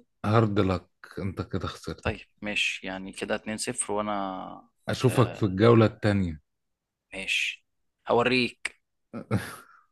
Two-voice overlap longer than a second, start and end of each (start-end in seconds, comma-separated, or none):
none